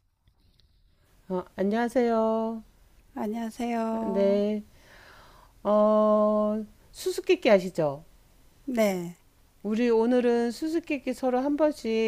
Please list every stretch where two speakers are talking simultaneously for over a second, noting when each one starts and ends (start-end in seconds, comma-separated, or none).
none